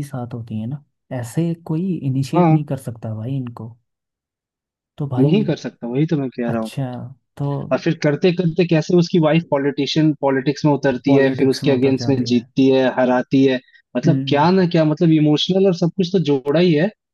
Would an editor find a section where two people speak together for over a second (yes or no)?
yes